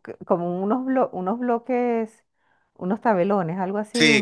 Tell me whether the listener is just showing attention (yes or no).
no